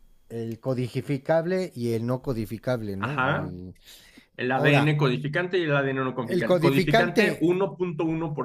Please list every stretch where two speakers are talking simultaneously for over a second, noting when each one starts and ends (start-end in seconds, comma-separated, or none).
6.2-7.6